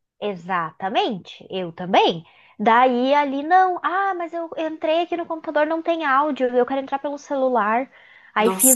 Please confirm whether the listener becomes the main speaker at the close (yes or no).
no